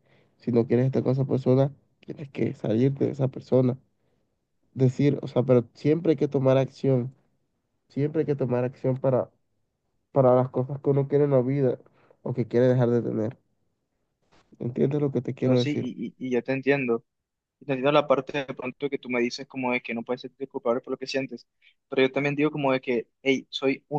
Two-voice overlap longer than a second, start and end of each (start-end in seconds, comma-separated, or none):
none